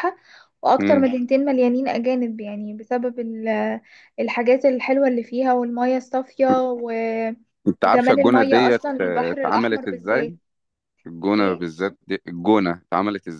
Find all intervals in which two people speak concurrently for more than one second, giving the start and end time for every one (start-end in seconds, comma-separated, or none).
7.8-10.3